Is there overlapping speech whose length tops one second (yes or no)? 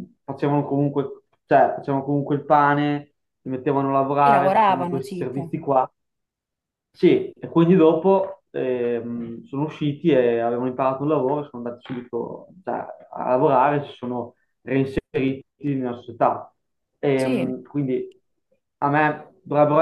yes